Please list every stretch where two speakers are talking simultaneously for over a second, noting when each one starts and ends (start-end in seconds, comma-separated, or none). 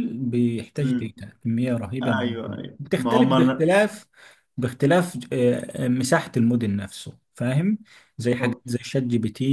2.0-3.7